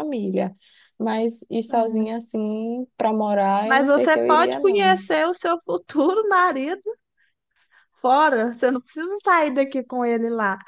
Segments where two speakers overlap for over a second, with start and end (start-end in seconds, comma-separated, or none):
3.6-5.0